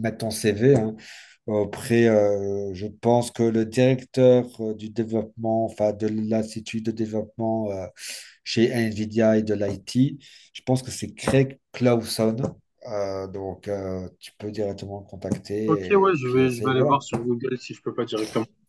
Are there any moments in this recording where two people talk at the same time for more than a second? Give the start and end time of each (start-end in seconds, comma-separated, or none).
15.7-17.0